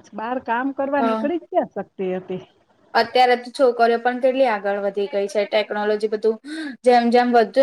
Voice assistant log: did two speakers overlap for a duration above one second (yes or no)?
no